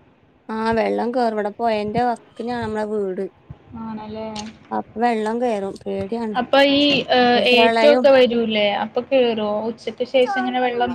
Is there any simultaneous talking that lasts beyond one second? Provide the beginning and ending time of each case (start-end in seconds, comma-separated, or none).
none